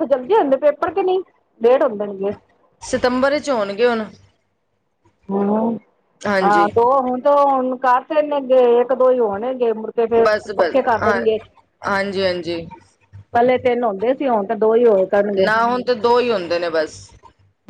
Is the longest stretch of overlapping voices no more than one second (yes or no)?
yes